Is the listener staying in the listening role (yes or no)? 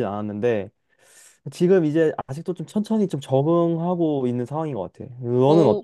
no